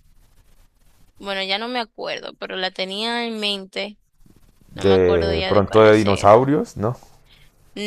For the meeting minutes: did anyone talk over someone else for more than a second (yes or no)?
yes